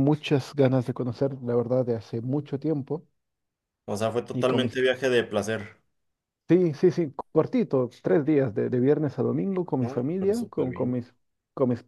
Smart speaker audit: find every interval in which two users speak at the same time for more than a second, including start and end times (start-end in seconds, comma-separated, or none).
9.8-11.0